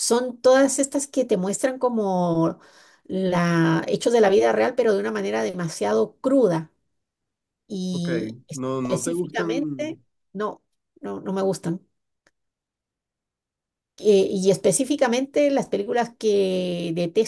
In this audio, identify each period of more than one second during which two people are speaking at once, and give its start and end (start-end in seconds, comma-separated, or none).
8.8-10.0